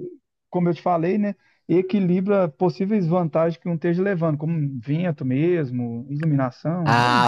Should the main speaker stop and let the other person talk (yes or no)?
yes